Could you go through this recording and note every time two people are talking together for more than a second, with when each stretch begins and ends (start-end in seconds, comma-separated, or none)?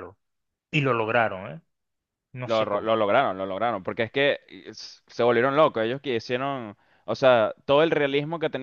none